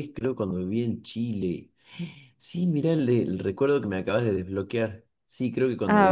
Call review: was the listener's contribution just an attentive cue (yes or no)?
yes